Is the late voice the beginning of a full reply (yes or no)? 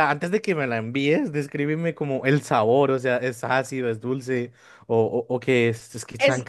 yes